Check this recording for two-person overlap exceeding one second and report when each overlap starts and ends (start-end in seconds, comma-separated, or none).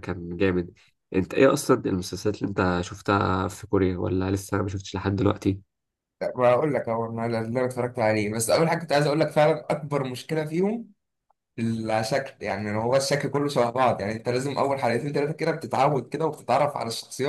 none